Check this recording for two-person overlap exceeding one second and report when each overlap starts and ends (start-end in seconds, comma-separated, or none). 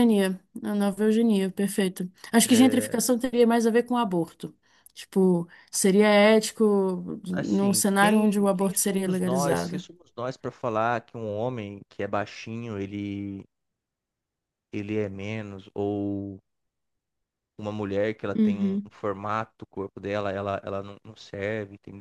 7.3-9.8